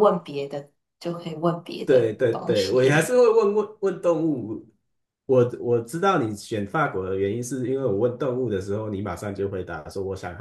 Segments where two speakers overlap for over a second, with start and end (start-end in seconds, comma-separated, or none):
1.8-3.1